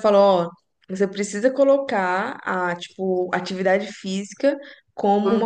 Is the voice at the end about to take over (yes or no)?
no